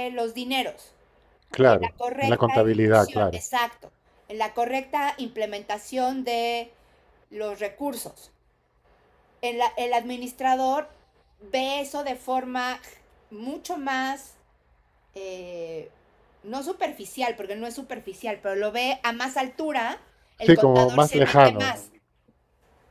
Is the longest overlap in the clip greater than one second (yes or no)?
yes